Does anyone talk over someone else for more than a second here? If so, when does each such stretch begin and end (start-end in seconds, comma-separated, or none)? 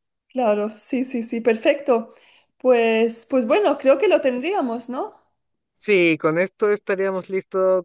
none